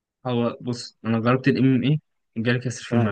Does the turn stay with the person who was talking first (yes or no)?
no